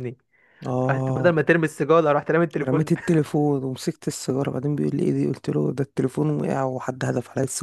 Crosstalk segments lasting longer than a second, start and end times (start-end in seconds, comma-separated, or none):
none